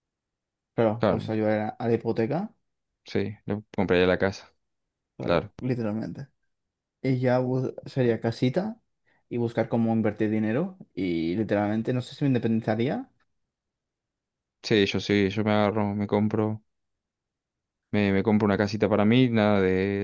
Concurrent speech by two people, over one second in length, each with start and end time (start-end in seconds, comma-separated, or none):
none